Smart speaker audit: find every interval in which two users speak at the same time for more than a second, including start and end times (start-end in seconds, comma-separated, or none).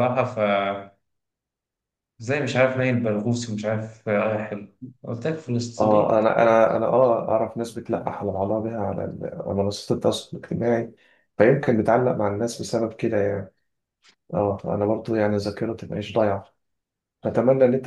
none